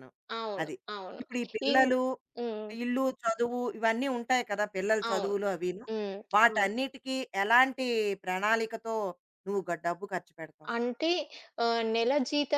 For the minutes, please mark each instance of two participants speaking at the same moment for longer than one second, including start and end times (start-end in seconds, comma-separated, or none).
none